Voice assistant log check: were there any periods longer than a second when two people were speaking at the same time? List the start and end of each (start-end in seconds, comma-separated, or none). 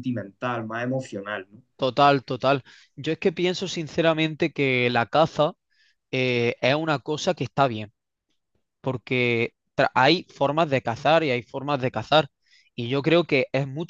none